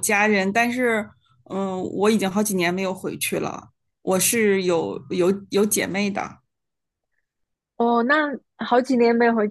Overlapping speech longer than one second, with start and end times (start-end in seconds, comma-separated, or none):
none